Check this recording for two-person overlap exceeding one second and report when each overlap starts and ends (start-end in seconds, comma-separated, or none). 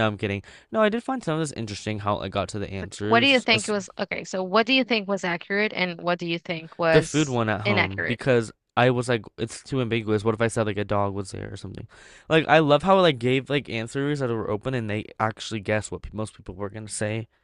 6.9-8.2